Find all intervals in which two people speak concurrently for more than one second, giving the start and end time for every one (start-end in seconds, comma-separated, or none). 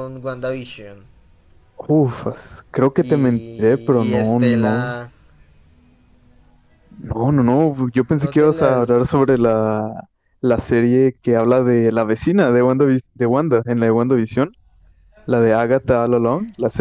3.0-4.9, 8.1-9.3